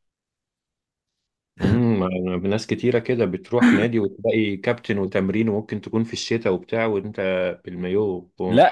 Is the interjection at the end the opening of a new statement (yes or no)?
yes